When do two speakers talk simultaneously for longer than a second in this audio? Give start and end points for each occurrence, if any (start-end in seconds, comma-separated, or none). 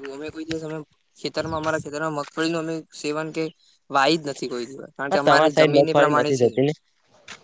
5.1-6.5